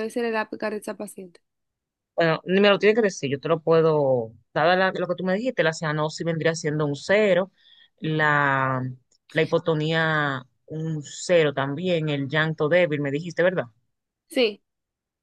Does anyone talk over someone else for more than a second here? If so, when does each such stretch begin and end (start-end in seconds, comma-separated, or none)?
none